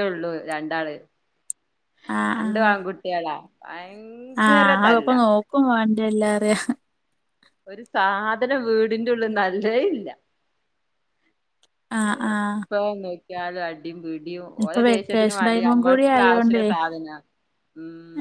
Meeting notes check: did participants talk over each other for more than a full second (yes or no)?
yes